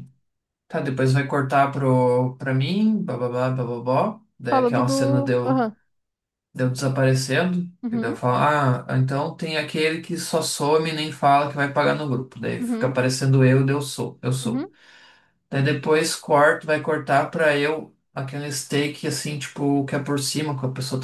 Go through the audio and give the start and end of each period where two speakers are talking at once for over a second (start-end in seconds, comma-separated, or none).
4.4-5.7